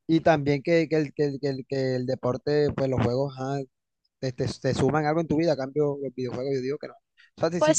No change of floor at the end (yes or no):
yes